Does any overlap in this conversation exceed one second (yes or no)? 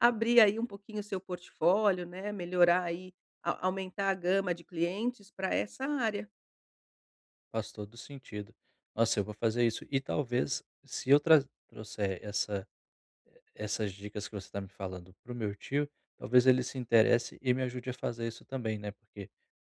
no